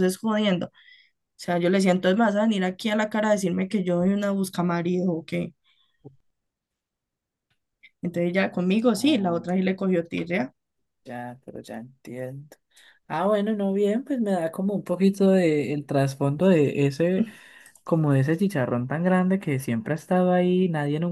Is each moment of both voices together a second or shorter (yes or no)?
yes